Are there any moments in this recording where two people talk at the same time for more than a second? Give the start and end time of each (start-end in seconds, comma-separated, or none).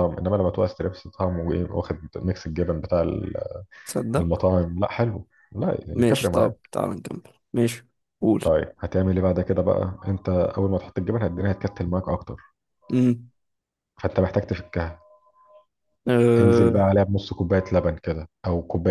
none